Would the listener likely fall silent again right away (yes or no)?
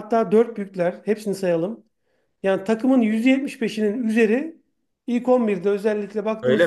no